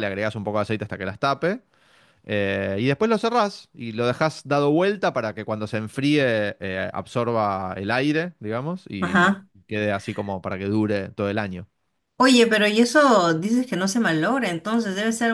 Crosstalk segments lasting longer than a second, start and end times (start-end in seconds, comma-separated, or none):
none